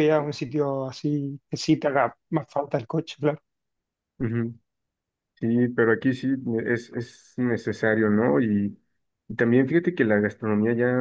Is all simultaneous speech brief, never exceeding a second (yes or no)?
yes